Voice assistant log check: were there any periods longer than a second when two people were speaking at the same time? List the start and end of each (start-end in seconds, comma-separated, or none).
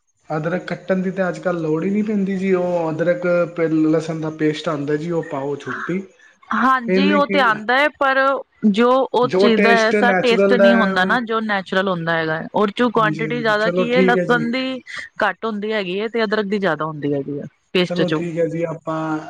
9.3-11.1, 12.8-14.5